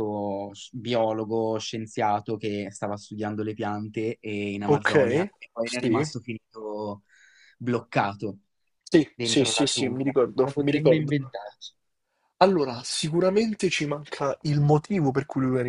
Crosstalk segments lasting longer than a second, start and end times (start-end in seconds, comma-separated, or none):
9.2-11.2